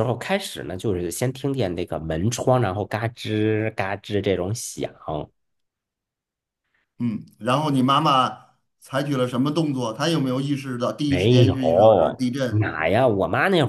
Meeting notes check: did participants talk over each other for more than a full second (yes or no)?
yes